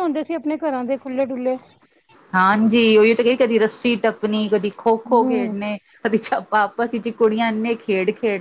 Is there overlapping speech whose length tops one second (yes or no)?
no